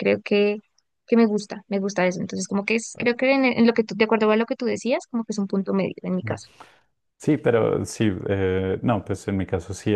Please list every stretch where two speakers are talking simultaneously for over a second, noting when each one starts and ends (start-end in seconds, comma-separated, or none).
none